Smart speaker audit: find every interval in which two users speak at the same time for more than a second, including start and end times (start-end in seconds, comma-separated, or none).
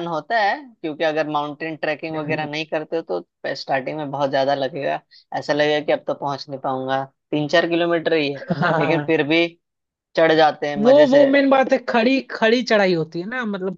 none